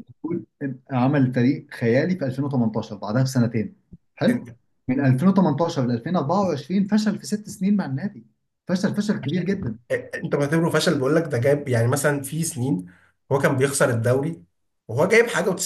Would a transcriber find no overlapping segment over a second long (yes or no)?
yes